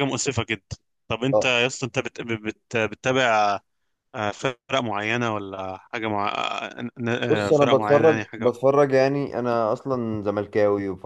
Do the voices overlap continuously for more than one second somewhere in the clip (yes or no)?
yes